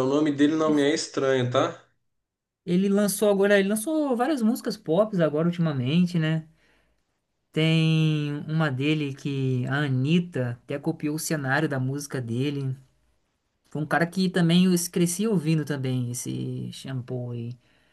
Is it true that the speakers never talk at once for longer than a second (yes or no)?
yes